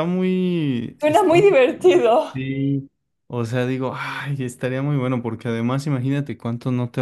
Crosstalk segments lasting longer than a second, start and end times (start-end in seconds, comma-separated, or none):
1.0-2.5